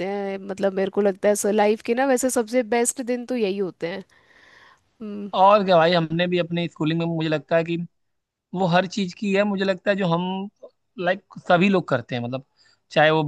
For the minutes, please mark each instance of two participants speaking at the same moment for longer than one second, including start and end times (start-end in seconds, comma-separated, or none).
none